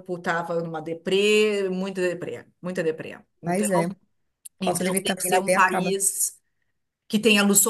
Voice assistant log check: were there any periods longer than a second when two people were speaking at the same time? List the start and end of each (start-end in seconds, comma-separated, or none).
4.6-6.0